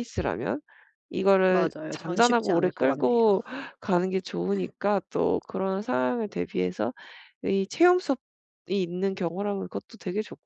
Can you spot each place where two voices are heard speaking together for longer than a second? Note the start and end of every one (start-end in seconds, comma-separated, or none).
1.5-3.2